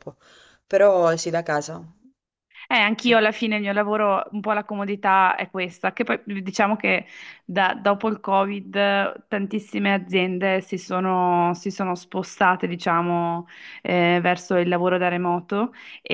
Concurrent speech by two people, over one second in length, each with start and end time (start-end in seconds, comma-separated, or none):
none